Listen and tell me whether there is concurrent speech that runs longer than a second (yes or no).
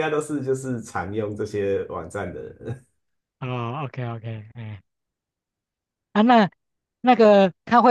no